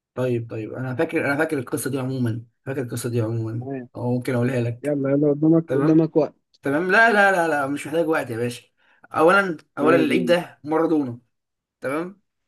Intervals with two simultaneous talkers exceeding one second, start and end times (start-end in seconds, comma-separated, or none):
none